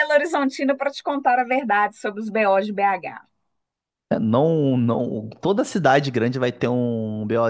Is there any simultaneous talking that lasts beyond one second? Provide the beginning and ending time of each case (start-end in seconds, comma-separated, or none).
none